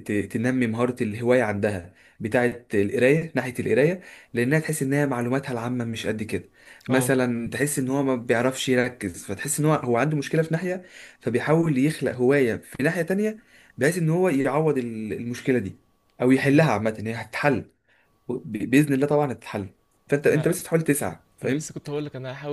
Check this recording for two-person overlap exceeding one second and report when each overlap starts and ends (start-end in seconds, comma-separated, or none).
none